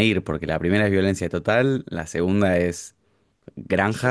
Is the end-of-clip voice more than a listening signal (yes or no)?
yes